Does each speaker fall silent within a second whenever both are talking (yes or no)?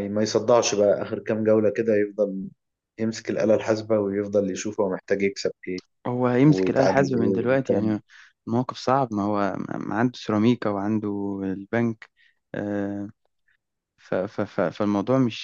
no